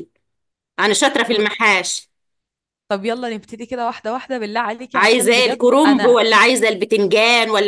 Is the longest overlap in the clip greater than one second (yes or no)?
yes